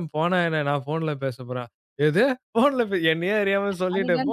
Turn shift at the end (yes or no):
no